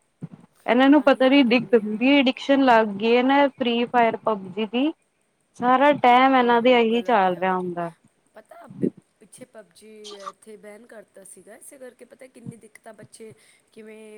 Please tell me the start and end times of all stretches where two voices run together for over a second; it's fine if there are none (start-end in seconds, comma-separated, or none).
0.9-2.2, 6.4-7.7